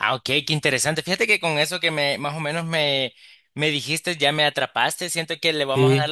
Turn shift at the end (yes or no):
no